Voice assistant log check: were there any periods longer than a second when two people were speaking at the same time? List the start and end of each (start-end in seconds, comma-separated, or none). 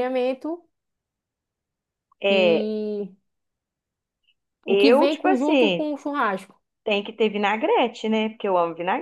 4.7-5.9